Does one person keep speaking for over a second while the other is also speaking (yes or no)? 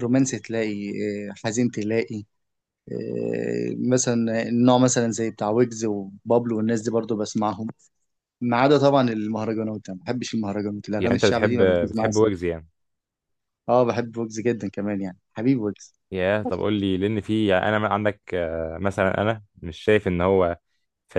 yes